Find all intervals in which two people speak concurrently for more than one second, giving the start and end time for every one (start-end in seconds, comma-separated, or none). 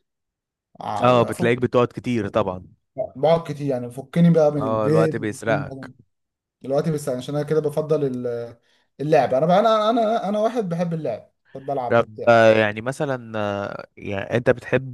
4.6-5.9